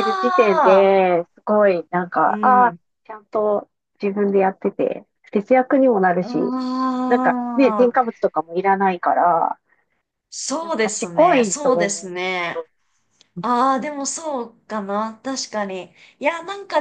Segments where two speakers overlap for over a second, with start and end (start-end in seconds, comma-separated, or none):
10.6-12.1